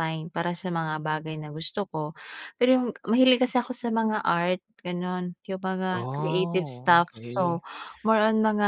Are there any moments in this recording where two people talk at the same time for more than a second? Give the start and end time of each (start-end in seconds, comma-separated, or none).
5.9-7.6